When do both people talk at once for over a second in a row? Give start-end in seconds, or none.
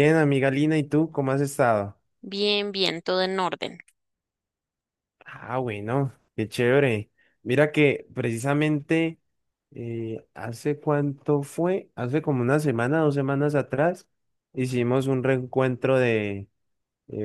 none